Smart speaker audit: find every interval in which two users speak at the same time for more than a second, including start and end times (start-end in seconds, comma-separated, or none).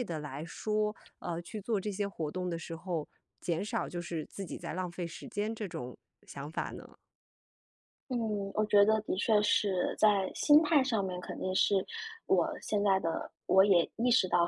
none